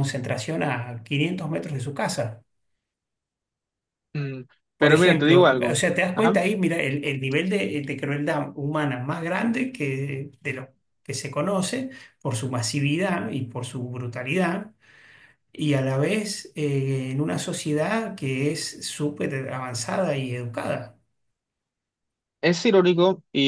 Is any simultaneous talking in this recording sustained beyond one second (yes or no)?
yes